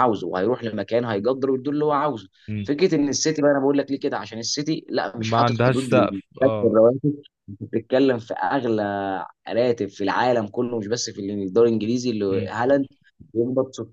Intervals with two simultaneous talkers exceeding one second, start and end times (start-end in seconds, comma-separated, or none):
5.2-6.8